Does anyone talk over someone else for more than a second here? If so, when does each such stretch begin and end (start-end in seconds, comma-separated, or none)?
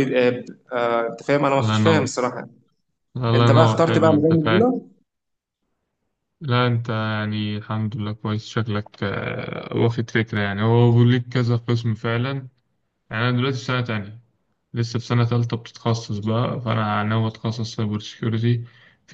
3.3-4.6